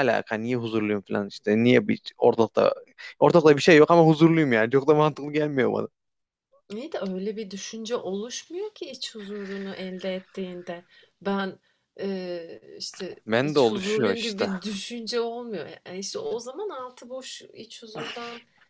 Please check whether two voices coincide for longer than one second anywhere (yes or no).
yes